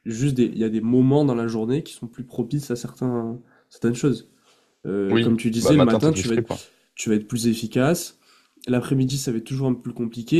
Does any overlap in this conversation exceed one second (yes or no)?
yes